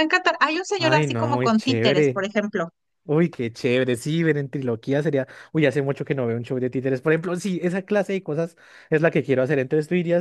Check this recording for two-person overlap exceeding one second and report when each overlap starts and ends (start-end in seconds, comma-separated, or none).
0.8-2.2